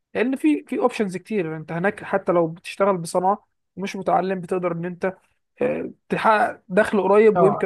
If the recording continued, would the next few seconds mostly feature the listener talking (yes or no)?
yes